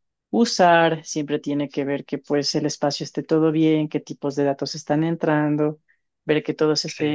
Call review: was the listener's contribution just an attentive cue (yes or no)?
yes